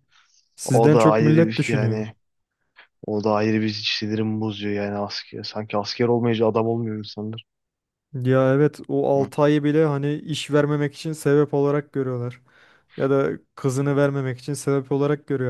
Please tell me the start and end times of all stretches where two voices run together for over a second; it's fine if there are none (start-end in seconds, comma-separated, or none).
0.6-2.0